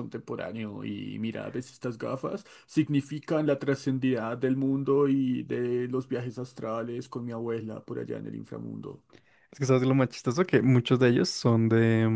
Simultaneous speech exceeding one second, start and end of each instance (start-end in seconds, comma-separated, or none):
none